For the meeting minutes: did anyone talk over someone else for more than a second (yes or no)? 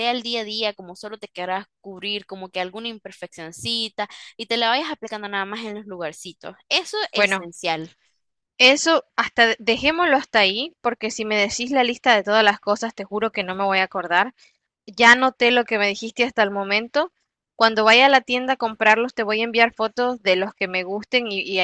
no